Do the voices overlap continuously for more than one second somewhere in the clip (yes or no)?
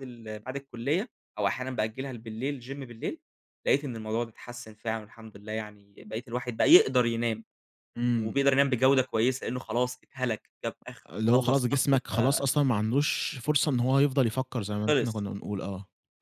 yes